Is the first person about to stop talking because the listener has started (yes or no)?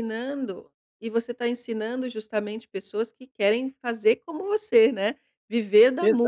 yes